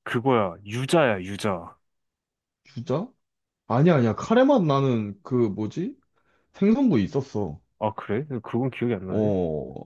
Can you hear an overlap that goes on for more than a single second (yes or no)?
no